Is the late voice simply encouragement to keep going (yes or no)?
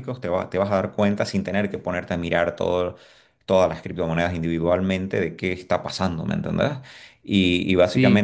yes